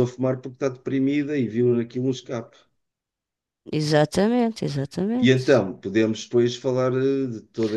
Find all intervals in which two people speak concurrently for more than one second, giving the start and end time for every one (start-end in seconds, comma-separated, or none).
none